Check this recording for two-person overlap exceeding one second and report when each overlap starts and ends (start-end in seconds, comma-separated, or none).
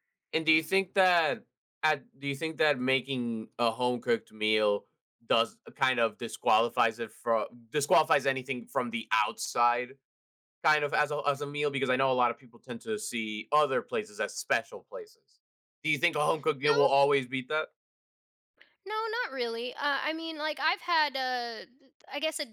none